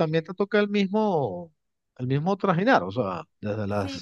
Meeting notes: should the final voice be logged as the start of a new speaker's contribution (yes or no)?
yes